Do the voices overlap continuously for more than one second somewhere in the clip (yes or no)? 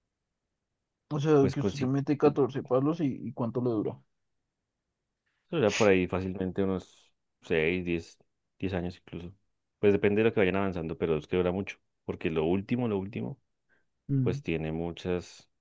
no